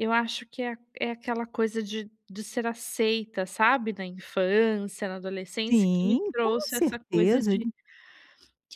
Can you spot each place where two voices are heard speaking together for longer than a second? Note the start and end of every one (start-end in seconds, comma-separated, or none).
5.7-7.7